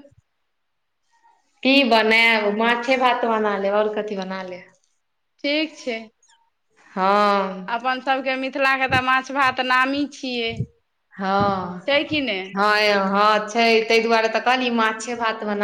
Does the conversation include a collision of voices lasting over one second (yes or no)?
no